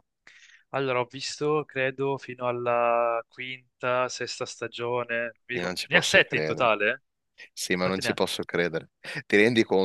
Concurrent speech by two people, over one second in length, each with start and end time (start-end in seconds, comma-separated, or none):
5.5-6.8